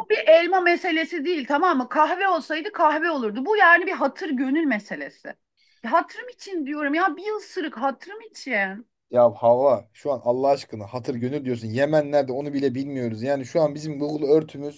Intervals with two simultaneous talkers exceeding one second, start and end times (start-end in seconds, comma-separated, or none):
none